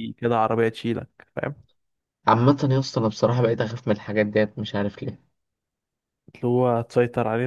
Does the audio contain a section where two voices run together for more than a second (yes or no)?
no